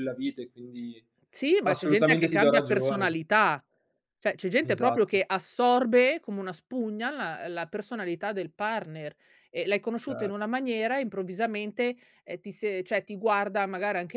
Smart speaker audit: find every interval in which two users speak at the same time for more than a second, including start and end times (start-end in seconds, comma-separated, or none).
1.6-3.1